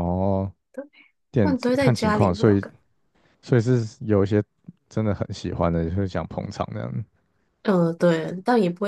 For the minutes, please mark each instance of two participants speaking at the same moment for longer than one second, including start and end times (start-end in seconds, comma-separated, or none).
1.4-2.6